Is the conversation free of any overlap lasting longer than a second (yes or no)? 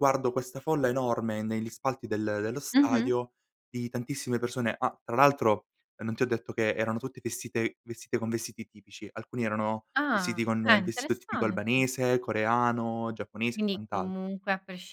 no